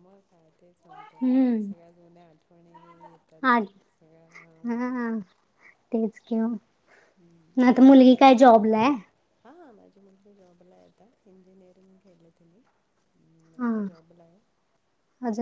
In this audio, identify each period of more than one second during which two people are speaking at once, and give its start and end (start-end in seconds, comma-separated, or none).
none